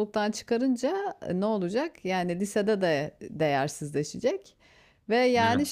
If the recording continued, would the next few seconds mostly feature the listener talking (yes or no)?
no